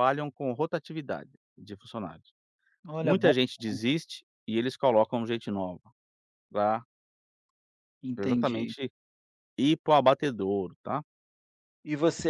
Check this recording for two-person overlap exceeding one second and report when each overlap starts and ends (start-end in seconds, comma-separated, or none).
none